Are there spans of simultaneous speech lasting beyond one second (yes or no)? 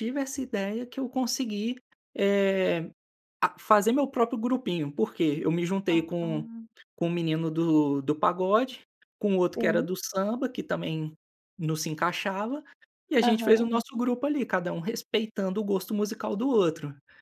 no